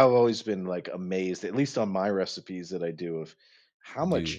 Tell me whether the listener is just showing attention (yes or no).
yes